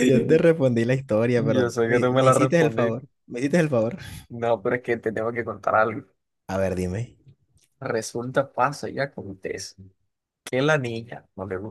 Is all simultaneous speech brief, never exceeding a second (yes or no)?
no